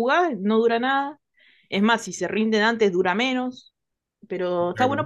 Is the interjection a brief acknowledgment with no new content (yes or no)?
yes